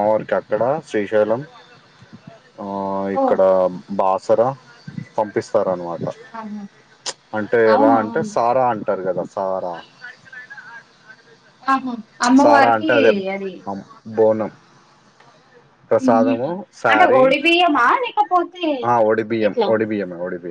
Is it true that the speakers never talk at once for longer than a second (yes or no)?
yes